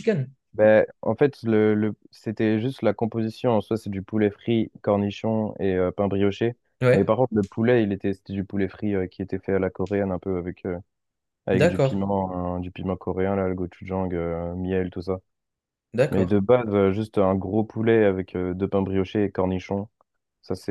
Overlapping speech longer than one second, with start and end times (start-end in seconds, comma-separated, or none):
none